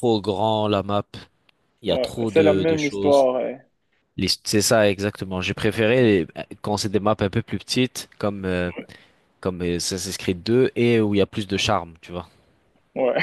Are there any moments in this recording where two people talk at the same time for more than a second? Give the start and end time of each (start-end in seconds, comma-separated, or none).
1.9-3.3